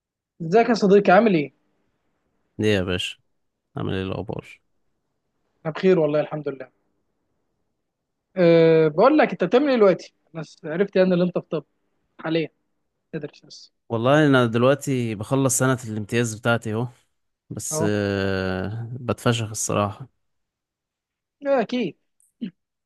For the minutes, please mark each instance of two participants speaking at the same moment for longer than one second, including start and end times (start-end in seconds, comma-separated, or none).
none